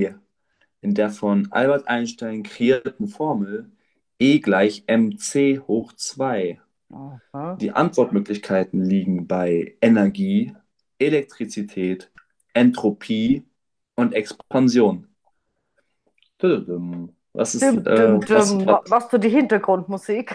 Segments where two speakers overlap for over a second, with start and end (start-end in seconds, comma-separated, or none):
17.6-19.0